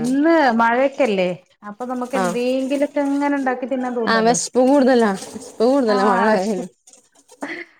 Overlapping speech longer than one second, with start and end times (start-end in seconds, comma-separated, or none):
none